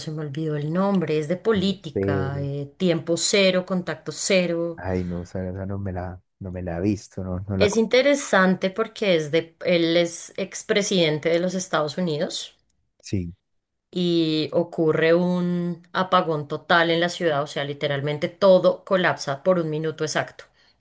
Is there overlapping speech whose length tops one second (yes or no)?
no